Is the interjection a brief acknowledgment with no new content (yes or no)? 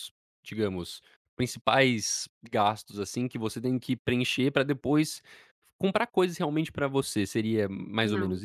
no